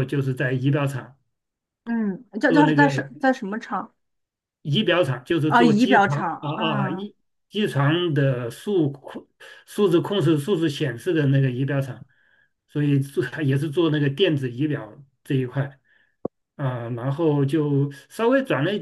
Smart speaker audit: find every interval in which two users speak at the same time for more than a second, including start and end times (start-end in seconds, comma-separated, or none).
5.5-7.1